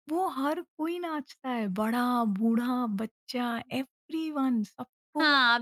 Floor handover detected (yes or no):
yes